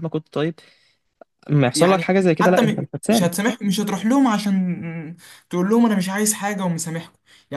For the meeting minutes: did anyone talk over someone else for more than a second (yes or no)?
yes